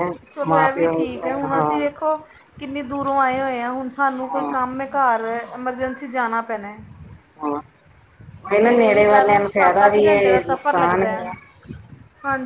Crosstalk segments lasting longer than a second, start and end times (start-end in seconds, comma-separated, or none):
8.6-11.2